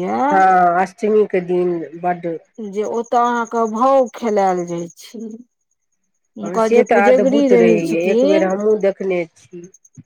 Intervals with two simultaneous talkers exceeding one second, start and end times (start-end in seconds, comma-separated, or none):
6.4-8.5